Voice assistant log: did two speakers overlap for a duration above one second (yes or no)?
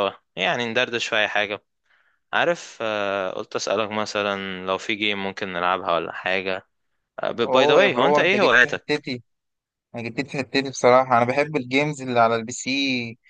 yes